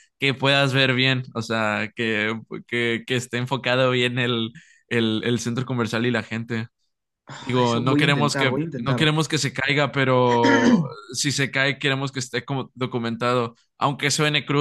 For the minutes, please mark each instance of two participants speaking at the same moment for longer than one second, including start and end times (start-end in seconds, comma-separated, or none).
7.3-9.1